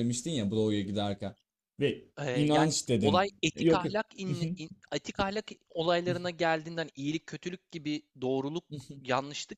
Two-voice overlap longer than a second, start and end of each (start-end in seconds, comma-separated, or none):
2.2-4.0